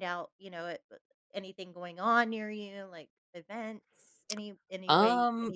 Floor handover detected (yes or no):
no